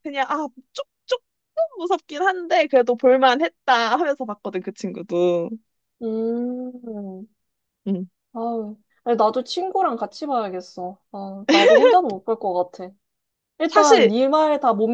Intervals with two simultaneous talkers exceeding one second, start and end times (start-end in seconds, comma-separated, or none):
none